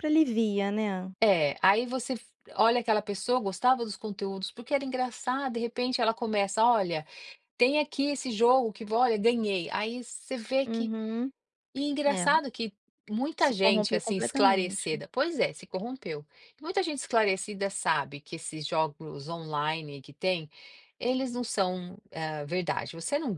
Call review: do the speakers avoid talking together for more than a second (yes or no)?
no